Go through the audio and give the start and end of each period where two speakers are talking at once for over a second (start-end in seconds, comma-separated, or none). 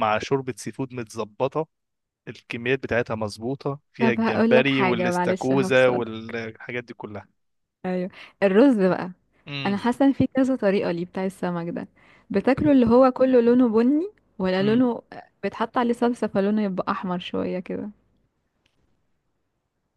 4.0-6.0